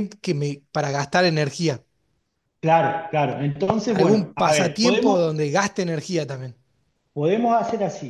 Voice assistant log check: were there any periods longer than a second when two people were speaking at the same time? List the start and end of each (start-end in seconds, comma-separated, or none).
3.9-5.3